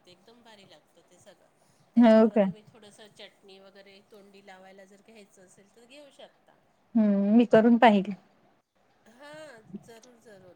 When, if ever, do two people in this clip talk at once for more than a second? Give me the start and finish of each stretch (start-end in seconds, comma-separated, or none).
none